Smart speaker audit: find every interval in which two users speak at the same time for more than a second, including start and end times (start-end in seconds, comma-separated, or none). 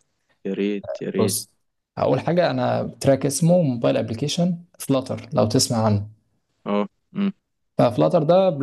none